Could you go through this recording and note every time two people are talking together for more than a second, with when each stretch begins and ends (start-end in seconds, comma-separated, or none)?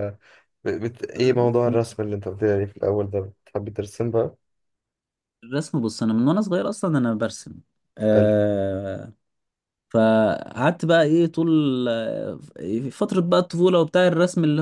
none